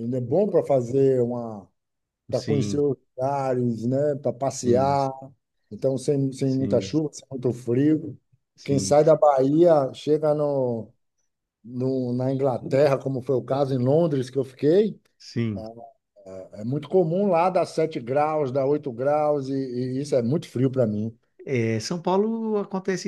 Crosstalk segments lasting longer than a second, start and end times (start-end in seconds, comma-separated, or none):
none